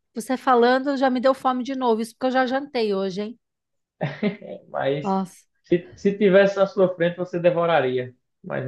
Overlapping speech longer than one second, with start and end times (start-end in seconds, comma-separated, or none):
none